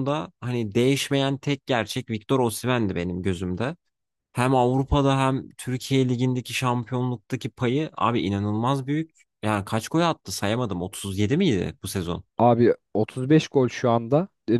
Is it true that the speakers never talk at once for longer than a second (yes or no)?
yes